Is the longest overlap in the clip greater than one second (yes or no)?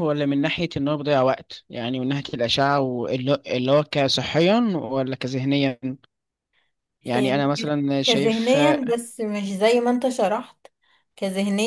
yes